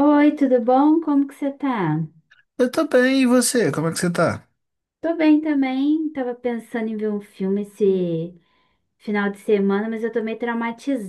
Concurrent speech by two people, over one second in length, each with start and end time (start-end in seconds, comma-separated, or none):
none